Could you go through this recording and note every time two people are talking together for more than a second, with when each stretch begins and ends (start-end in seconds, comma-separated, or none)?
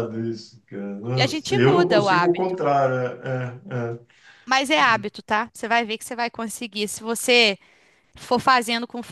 1.1-2.6